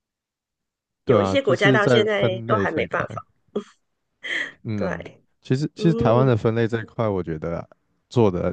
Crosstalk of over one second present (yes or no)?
yes